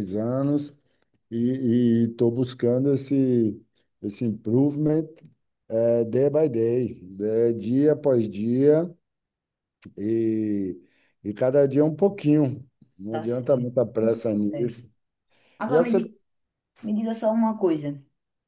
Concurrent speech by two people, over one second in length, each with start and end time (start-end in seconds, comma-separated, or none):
13.1-14.8